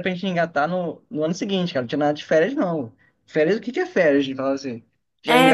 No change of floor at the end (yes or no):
no